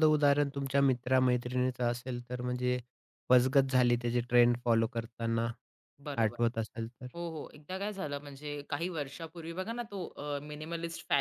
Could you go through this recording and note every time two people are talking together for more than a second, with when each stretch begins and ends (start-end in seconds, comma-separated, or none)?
none